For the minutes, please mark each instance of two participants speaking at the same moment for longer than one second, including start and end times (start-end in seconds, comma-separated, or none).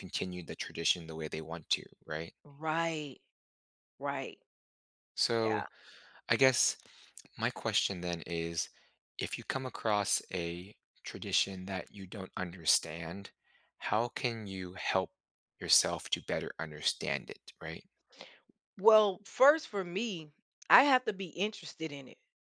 none